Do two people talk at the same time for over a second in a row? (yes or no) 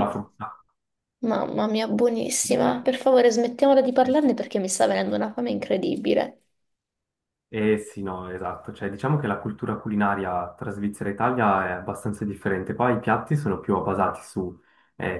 no